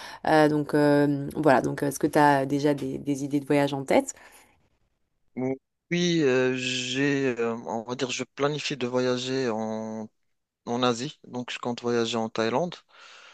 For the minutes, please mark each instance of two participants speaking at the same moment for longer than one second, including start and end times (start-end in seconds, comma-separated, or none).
none